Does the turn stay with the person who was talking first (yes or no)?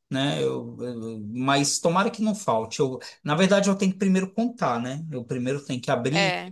yes